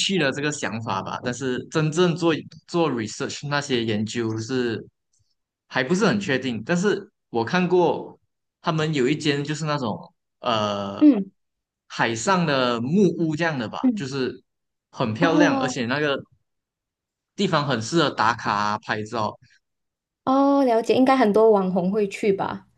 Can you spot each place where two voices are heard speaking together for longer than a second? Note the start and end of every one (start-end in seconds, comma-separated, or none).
none